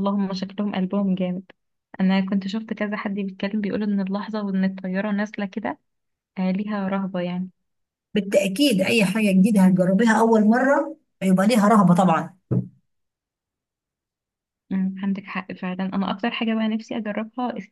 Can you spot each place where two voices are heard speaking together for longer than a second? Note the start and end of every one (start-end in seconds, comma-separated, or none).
none